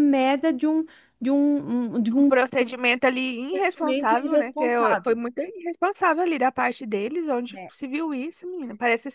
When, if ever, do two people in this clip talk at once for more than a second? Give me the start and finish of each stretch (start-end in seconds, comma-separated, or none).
3.5-5.2